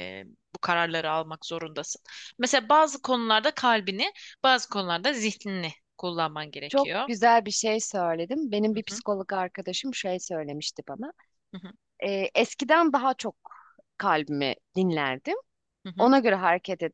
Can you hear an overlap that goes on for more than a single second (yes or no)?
no